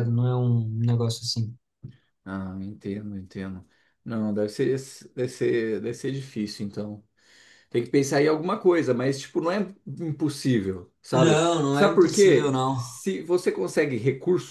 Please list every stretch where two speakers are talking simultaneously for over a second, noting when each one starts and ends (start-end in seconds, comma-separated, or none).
11.1-12.8